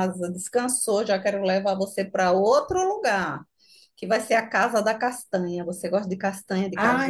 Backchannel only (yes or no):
no